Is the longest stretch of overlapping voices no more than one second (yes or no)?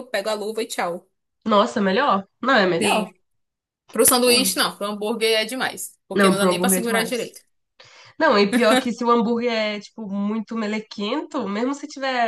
no